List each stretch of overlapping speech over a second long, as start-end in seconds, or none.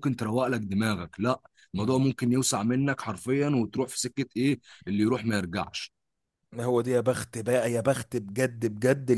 none